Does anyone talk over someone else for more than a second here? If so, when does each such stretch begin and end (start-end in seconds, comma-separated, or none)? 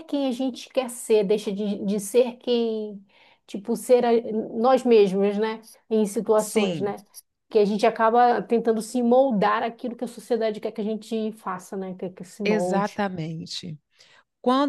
none